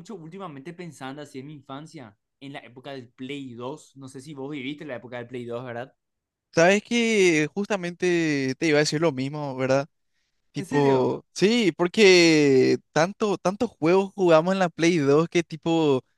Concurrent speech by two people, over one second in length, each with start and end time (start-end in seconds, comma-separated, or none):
none